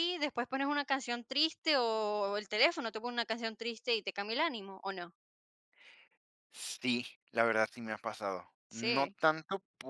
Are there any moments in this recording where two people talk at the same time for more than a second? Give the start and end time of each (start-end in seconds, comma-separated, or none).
none